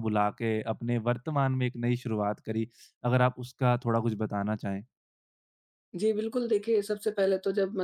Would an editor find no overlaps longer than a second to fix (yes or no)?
yes